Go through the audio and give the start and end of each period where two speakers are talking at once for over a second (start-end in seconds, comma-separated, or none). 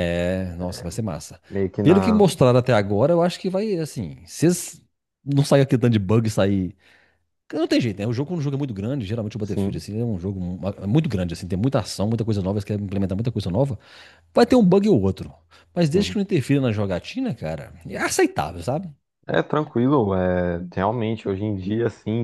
none